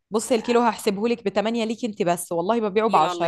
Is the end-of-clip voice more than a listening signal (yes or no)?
yes